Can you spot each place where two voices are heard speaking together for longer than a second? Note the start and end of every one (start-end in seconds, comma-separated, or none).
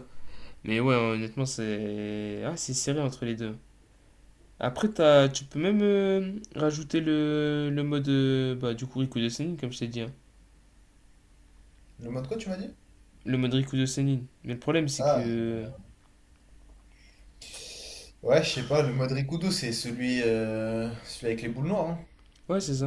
none